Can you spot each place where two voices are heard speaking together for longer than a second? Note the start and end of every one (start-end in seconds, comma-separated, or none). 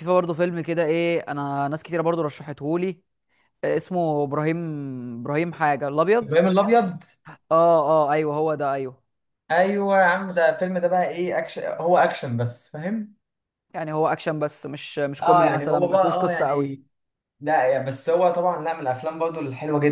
15.2-16.7